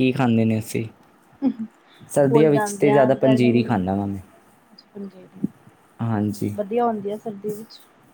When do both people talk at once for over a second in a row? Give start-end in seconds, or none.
2.3-3.6